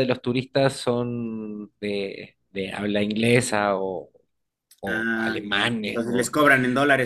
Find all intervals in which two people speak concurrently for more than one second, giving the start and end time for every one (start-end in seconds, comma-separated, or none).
4.8-6.3